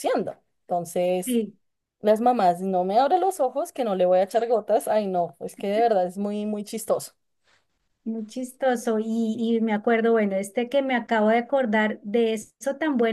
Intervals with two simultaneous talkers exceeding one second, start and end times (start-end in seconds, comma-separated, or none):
none